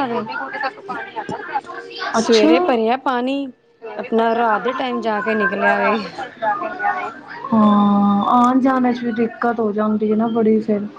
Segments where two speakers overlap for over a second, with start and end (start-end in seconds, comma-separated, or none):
none